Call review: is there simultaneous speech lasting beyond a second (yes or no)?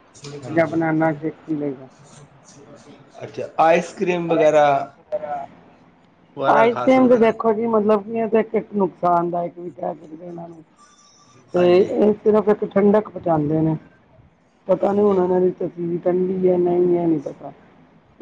no